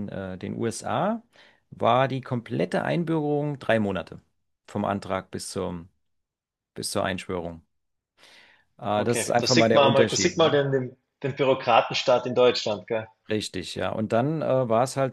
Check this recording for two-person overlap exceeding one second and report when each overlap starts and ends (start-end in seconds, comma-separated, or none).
9.0-10.6